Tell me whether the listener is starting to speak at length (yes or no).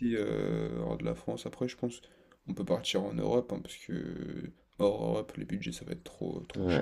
yes